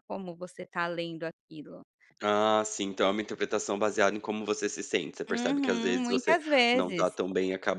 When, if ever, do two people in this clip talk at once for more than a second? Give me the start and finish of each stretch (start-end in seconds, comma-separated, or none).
5.3-7.2